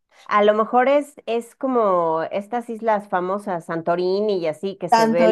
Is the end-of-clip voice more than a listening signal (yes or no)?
yes